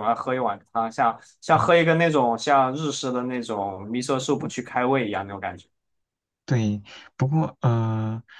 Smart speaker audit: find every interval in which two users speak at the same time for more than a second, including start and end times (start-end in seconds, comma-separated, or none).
none